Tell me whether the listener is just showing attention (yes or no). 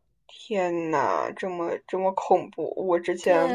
no